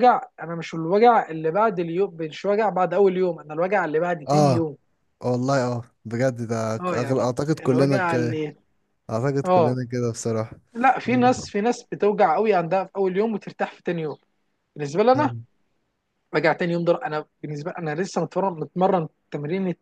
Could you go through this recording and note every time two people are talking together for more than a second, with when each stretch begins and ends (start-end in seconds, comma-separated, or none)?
6.8-8.1